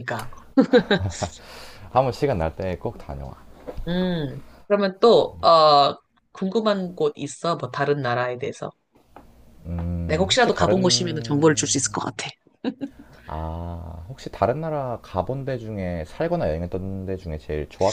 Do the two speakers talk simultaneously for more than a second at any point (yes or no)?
yes